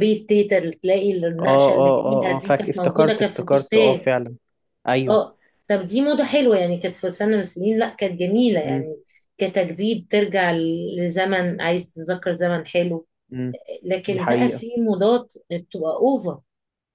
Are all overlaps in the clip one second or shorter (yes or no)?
no